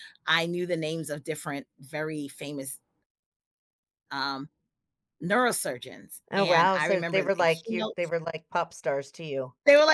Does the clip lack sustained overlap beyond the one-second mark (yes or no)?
no